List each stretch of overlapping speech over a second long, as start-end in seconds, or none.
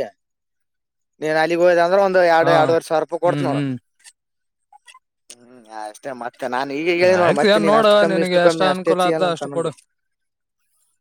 7.2-9.7